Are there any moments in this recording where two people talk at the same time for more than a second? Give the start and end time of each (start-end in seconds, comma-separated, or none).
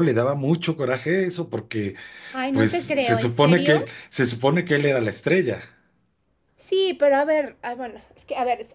2.5-3.9